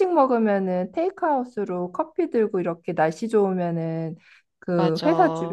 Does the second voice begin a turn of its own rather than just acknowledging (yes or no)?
no